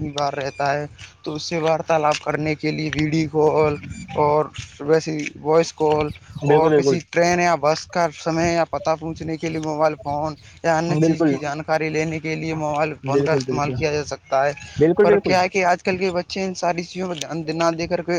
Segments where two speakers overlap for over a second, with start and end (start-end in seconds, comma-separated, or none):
none